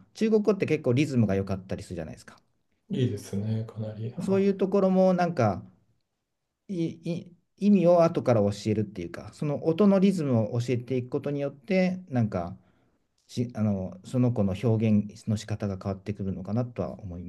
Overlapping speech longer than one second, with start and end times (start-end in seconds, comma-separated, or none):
none